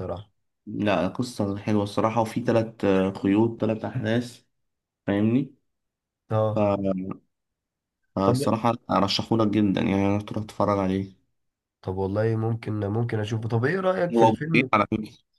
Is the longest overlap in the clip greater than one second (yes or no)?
no